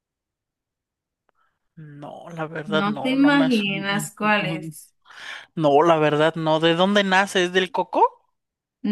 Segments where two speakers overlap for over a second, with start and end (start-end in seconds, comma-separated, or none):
2.7-4.1